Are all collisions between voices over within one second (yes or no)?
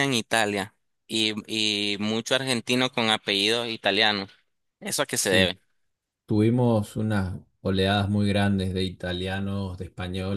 yes